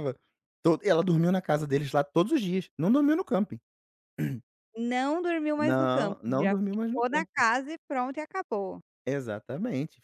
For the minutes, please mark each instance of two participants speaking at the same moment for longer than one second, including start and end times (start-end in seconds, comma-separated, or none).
5.6-7.4